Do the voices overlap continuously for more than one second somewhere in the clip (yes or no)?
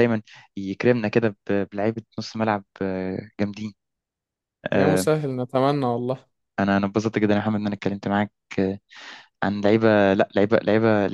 no